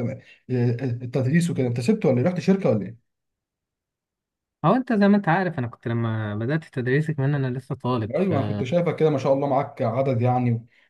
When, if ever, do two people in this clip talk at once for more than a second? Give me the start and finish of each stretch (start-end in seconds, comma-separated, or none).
none